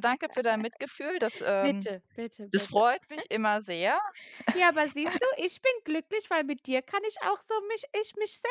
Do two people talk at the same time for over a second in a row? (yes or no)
no